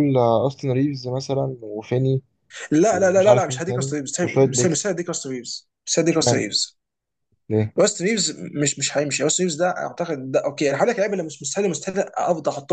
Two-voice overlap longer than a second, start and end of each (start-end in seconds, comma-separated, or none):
2.9-4.9